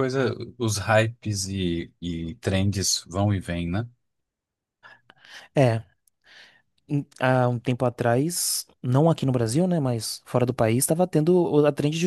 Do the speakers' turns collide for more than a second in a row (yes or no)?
no